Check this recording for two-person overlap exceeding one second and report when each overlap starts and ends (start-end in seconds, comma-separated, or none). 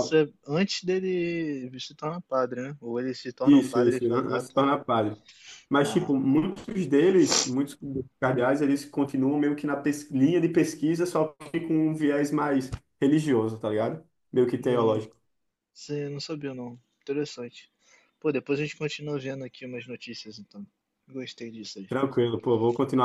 3.4-4.6